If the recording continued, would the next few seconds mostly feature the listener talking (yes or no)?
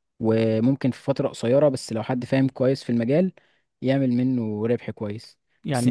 yes